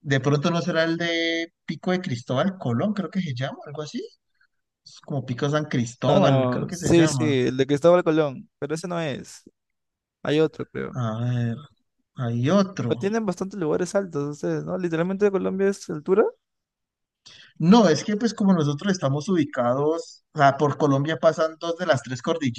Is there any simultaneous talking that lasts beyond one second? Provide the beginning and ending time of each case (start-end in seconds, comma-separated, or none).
6.1-7.3